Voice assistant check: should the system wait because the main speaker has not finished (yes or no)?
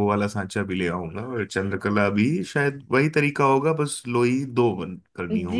no